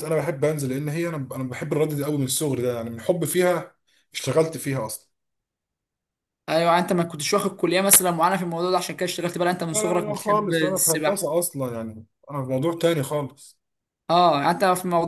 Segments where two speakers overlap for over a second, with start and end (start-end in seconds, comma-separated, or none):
9.7-11.3